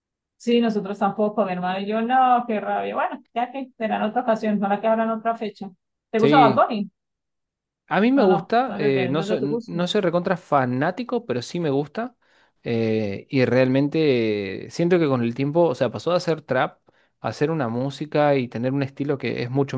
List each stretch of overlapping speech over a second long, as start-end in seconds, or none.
8.2-9.8